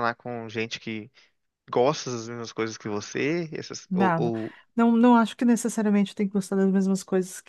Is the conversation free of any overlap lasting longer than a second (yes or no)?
yes